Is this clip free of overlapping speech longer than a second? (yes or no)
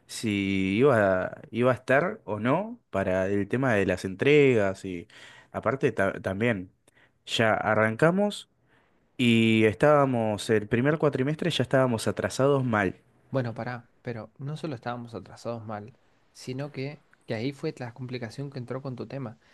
yes